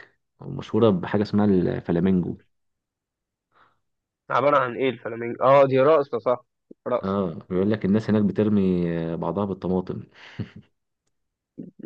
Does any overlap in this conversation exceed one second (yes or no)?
no